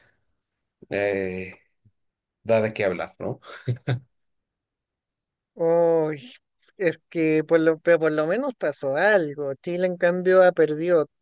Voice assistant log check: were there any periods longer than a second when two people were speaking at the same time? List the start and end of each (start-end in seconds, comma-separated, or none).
none